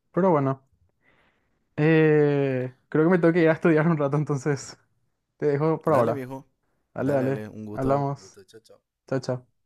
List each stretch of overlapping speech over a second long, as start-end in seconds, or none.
7.0-8.4